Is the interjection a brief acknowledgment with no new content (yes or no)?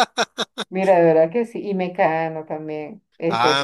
no